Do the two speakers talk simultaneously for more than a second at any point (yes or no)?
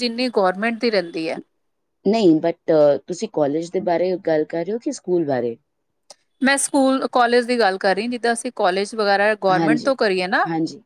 no